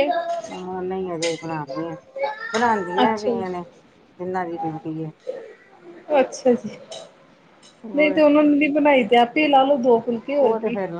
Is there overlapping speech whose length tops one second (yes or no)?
no